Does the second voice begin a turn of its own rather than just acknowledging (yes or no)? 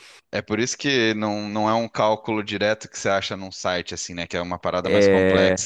yes